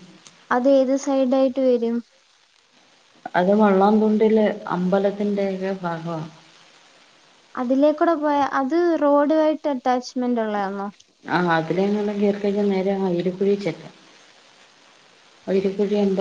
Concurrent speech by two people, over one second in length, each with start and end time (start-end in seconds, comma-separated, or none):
none